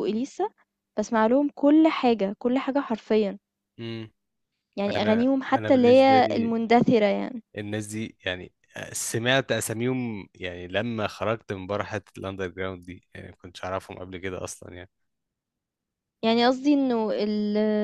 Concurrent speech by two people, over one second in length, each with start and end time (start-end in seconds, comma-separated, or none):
5.0-6.5